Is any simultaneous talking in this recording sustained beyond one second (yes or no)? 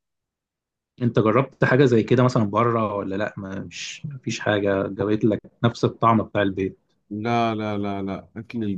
no